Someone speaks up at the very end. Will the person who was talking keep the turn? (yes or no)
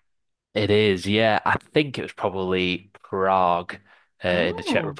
yes